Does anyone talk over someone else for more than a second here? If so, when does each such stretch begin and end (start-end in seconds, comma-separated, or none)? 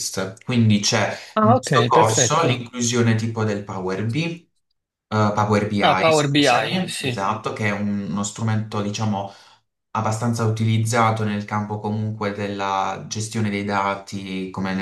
1.3-2.6, 5.8-7.1